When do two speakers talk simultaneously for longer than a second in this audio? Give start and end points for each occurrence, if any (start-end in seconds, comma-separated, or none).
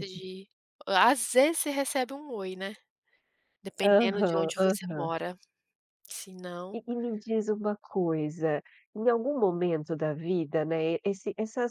3.8-5.1